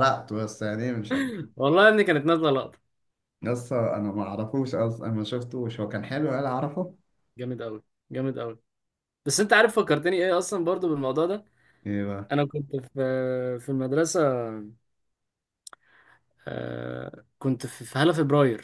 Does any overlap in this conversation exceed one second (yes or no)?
no